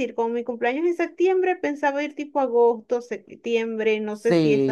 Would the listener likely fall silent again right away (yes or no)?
no